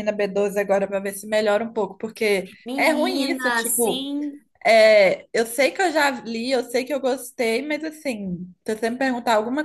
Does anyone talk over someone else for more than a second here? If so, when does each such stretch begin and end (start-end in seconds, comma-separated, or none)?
2.6-4.1